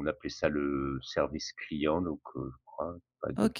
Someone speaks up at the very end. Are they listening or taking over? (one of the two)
taking over